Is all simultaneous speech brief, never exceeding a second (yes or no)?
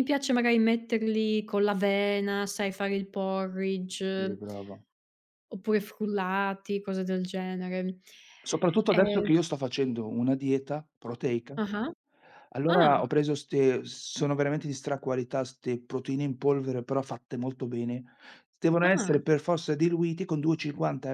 yes